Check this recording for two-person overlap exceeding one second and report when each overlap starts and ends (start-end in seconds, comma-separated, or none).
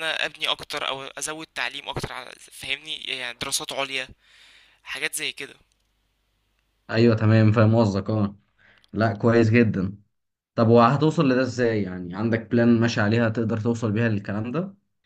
none